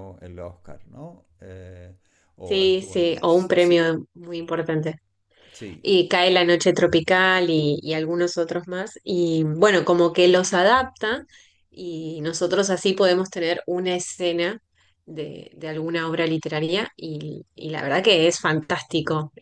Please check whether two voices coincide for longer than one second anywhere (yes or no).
yes